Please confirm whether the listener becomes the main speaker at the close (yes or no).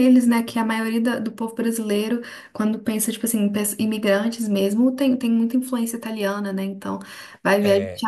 no